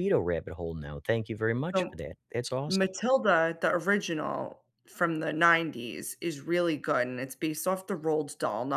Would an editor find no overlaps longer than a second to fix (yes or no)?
yes